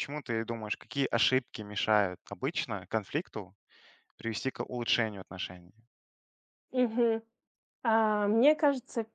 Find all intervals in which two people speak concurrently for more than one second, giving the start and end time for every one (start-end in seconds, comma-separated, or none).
none